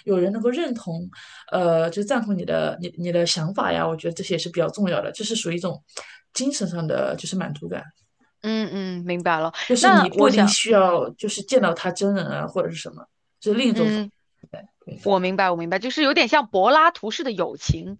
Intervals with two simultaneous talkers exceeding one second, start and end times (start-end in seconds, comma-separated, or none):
9.7-11.1